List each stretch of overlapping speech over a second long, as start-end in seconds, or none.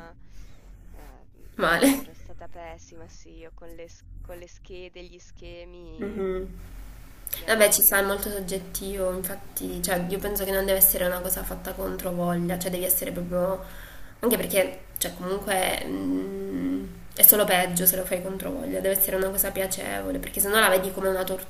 none